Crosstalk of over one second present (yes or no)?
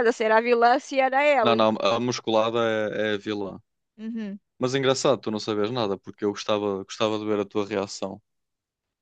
no